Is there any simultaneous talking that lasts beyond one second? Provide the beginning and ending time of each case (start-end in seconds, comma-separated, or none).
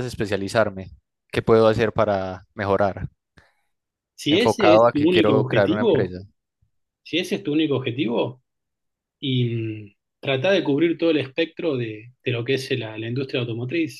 4.3-6.1